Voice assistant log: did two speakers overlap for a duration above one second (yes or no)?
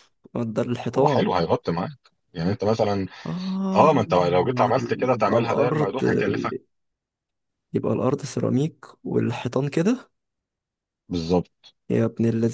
yes